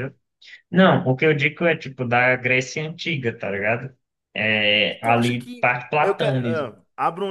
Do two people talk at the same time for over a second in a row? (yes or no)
yes